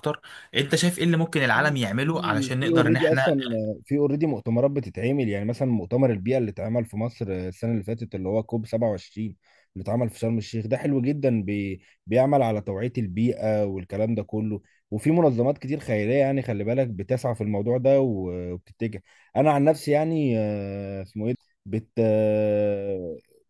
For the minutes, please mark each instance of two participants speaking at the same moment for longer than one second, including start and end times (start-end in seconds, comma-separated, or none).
1.5-3.3